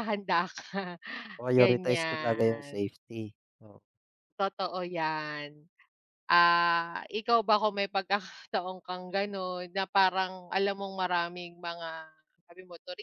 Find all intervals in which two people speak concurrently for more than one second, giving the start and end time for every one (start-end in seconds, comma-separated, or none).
1.6-2.8